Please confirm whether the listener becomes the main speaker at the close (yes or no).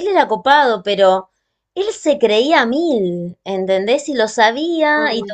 no